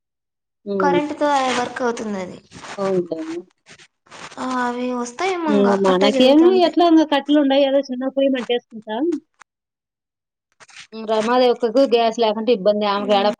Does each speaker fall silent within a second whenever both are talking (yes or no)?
yes